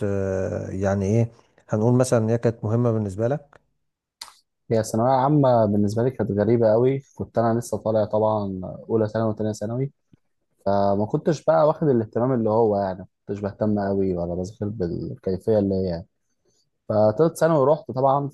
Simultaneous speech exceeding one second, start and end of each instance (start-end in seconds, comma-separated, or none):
none